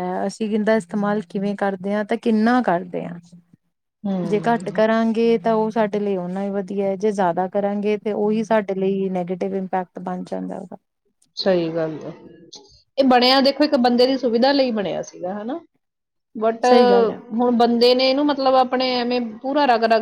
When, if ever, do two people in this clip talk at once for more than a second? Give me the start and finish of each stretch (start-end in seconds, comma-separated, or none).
none